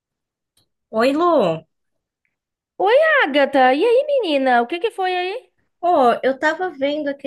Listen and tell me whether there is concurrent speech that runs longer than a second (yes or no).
no